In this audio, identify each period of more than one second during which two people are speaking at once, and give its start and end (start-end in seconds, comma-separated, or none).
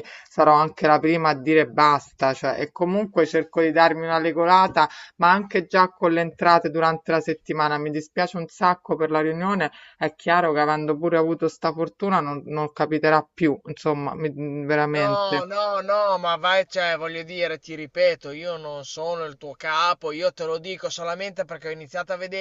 none